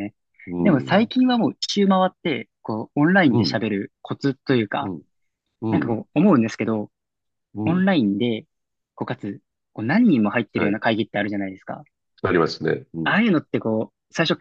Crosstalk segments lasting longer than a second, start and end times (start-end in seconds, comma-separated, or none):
none